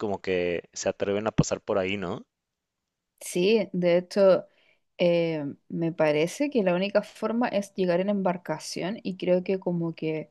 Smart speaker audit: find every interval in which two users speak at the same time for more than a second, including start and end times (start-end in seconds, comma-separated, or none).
none